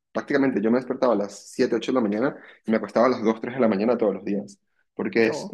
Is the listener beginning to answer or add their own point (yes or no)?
no